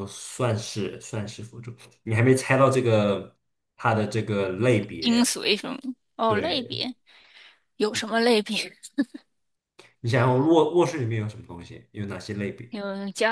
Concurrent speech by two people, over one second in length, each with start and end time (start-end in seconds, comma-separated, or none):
none